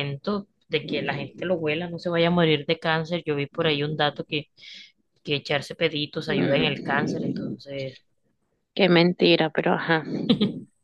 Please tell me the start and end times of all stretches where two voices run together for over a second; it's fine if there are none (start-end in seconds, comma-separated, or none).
6.3-7.5